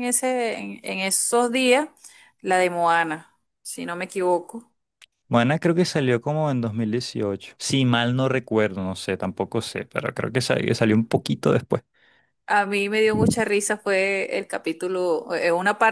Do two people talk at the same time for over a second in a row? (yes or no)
no